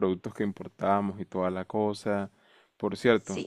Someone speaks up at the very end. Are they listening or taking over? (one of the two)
listening